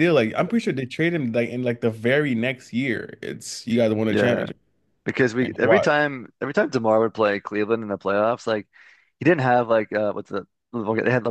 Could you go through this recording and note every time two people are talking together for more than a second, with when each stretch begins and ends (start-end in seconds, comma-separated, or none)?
none